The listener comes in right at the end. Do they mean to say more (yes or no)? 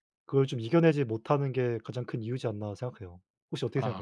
yes